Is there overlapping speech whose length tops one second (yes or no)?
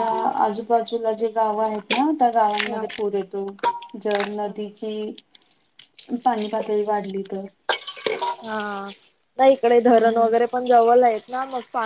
no